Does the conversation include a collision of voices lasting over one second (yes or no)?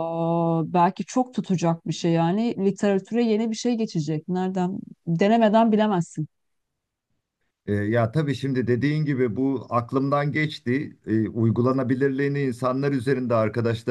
no